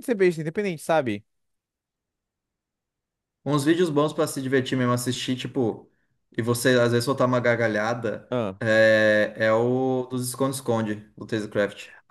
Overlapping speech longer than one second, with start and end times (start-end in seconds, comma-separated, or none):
none